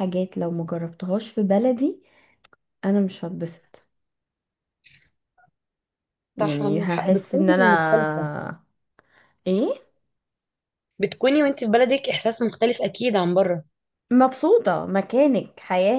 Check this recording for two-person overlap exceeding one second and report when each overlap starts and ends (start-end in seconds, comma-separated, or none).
6.4-7.7